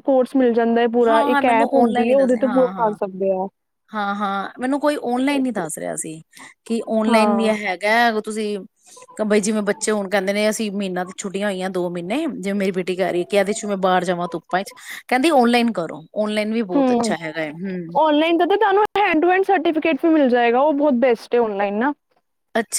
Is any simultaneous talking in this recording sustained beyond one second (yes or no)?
yes